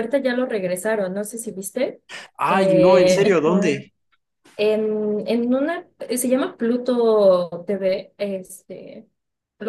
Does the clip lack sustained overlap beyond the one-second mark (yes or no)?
no